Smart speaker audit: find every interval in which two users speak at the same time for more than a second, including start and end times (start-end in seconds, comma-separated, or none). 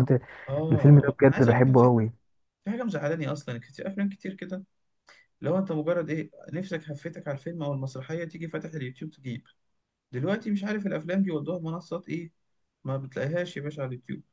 0.7-2.0